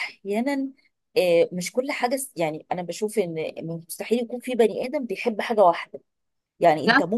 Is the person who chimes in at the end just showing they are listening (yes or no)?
yes